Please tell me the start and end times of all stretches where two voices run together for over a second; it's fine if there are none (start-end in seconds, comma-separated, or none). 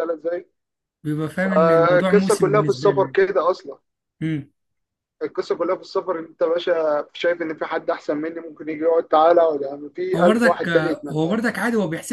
1.5-3.2, 10.1-11.4